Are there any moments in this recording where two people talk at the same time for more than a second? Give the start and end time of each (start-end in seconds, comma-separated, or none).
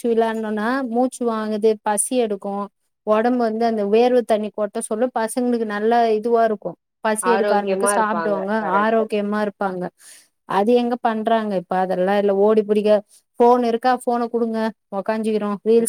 7.3-9.0